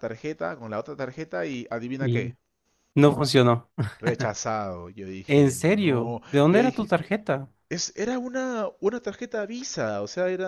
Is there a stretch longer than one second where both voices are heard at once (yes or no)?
yes